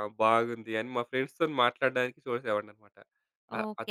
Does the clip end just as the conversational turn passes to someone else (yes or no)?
yes